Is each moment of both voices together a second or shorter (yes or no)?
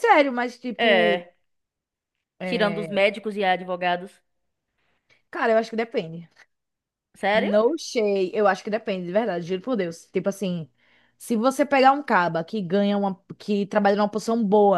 yes